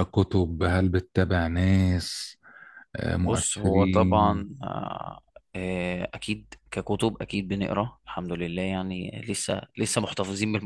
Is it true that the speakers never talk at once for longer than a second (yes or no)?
no